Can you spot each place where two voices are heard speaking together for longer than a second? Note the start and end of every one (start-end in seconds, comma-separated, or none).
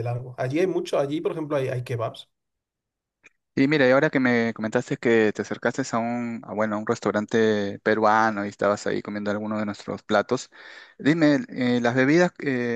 none